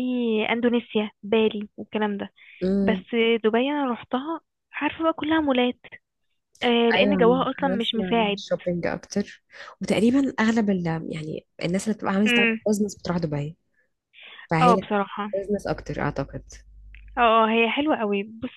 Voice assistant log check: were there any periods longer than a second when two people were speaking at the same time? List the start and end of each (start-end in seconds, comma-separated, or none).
7.0-8.4